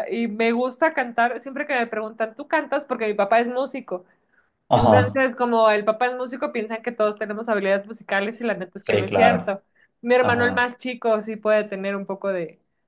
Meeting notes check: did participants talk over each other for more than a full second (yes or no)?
yes